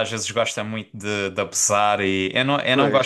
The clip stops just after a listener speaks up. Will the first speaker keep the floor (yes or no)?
yes